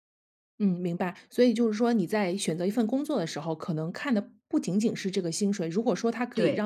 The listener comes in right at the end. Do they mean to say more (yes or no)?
no